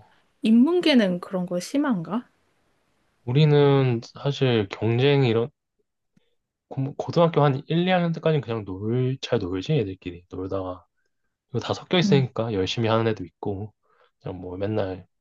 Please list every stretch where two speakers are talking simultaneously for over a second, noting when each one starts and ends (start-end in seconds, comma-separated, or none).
none